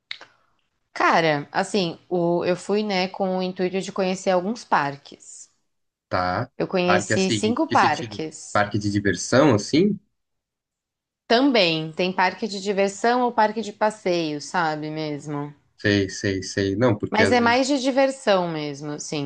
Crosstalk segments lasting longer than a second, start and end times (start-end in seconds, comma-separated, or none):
6.6-8.6